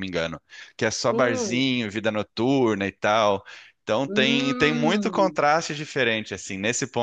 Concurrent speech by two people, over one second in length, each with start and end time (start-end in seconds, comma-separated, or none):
4.0-5.4